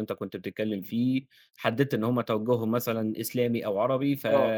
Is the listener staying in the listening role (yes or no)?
yes